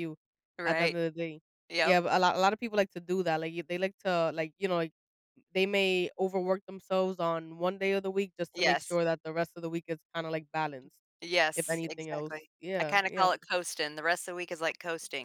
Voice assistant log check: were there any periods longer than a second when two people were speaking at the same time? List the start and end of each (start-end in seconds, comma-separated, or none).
11.6-13.3